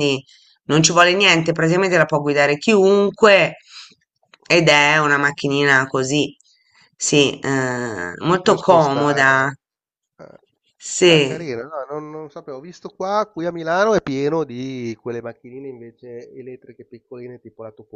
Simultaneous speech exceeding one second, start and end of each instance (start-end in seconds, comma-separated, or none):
8.3-9.5